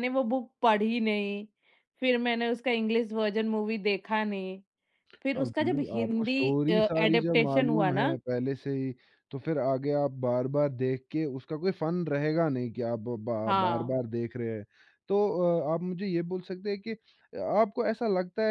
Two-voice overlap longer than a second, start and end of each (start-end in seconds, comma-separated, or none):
5.2-8.1